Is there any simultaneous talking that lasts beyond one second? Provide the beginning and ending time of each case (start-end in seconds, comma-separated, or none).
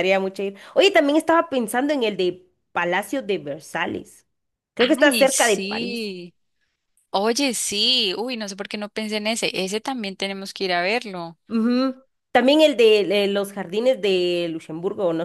4.8-6.1